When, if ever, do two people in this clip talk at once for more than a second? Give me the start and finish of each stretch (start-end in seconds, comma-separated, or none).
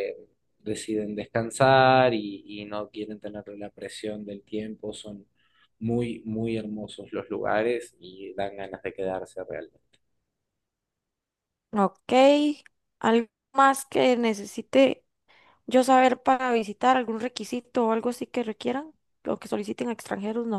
none